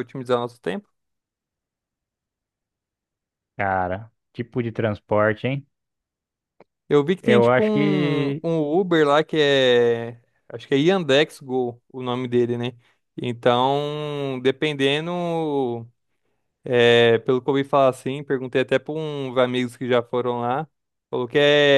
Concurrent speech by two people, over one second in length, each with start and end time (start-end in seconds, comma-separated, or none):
7.2-8.4